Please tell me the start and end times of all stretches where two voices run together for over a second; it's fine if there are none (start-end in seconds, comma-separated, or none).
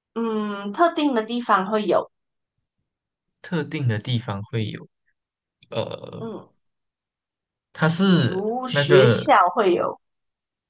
8.1-9.4